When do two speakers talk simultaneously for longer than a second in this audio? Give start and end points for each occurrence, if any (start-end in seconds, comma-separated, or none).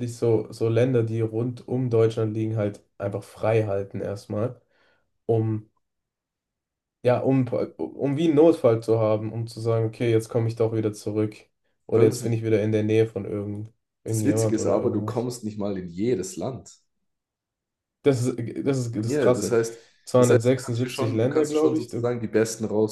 14.1-15.3, 20.2-22.1